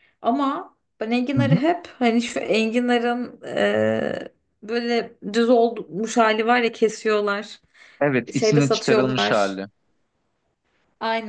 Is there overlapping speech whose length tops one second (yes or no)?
yes